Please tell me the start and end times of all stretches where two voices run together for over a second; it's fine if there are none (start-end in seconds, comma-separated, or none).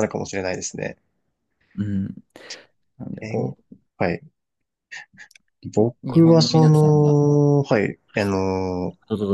5.8-7.2